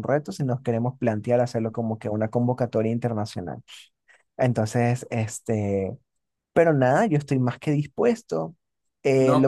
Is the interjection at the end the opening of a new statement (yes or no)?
no